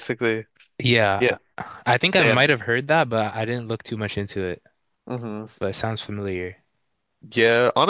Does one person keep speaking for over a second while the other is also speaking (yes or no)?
no